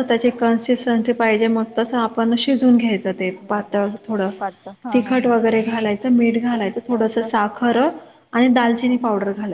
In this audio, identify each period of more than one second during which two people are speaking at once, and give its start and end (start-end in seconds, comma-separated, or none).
none